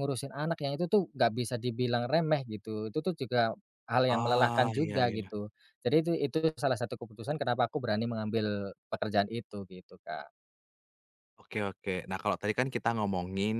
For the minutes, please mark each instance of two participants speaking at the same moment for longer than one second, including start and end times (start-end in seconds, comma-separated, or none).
4.1-5.3